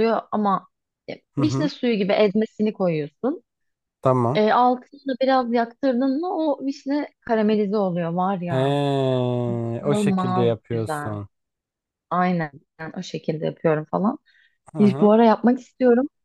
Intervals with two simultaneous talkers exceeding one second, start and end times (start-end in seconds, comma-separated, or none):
9.8-11.1